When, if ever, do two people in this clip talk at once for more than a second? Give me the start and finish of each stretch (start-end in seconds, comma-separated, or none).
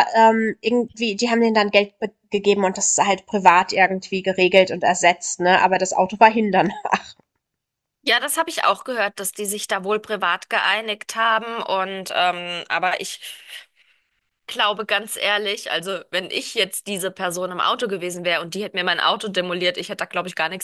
none